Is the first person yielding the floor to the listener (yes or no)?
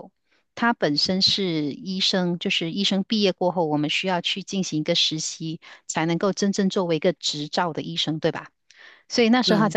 no